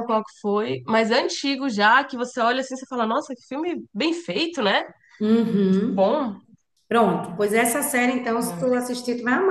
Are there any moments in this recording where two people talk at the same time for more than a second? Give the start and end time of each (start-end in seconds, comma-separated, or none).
none